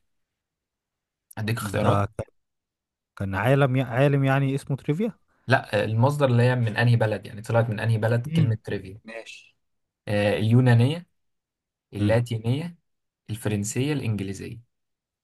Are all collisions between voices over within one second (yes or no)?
yes